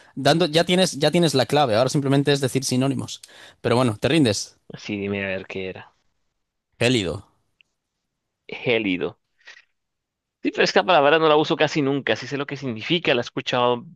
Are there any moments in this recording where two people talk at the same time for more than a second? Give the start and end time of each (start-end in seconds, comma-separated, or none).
none